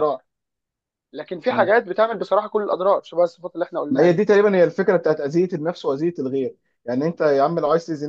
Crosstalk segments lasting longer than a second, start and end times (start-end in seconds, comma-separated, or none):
none